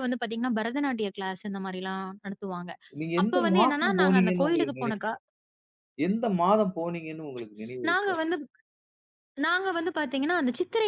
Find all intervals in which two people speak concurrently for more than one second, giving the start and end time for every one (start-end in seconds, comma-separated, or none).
3.2-4.9